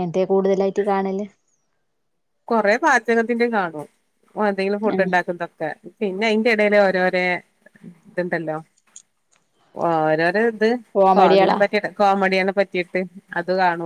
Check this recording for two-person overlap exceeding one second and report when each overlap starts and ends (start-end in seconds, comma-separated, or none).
none